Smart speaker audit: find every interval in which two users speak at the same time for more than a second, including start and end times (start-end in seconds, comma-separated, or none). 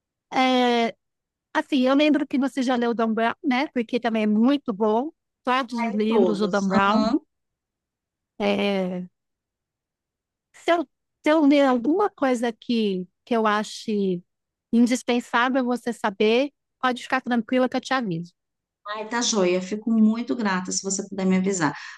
5.7-7.1